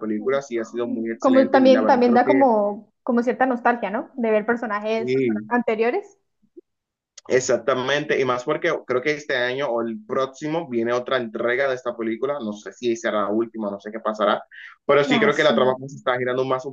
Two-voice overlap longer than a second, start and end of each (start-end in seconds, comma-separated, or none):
1.2-2.4